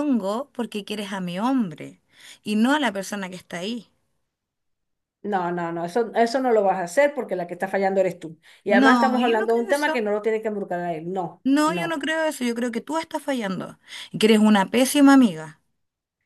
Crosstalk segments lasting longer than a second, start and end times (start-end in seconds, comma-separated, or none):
8.7-10.0